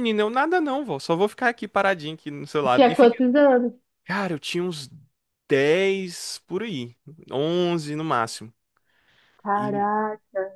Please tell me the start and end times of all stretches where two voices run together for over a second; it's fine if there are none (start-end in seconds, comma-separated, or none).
none